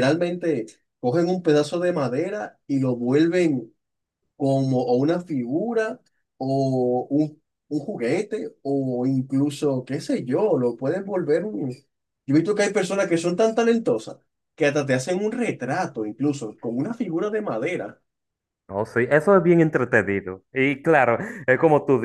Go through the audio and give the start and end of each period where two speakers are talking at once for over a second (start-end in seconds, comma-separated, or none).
none